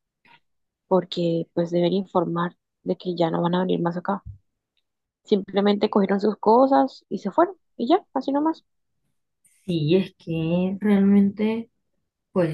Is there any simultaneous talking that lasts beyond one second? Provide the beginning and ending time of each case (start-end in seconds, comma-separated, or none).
none